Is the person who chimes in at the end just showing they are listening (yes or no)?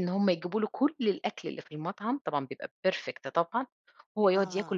yes